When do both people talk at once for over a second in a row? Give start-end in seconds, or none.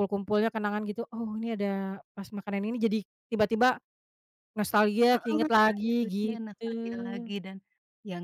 5.1-7.3